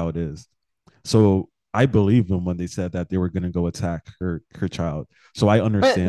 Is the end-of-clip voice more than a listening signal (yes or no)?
yes